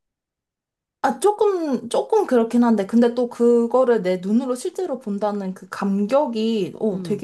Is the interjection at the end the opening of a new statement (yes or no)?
no